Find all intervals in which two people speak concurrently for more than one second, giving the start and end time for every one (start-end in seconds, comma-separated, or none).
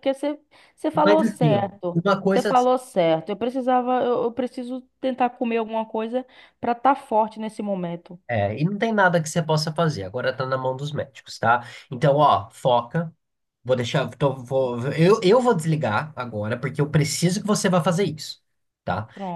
1.0-2.5